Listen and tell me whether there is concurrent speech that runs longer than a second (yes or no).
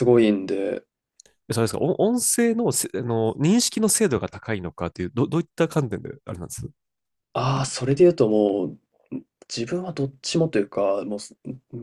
no